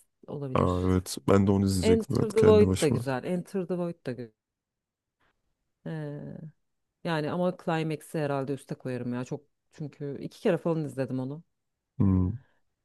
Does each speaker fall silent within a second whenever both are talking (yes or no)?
no